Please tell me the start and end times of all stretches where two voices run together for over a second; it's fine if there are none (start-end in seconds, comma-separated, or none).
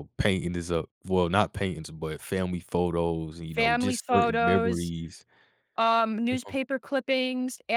3.5-4.9